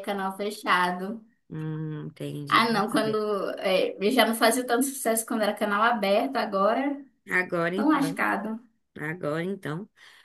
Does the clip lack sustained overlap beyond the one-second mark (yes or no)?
yes